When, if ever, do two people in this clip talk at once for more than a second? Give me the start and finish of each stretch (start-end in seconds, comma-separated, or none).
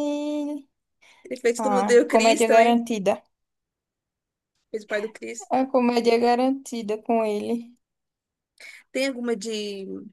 1.6-2.8